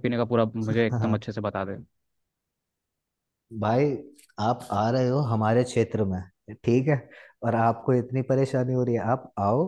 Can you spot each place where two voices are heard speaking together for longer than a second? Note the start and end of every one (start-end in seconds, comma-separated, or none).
none